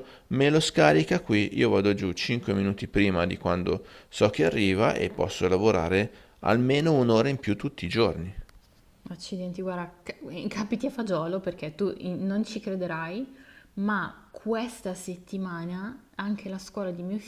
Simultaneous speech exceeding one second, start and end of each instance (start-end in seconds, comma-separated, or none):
none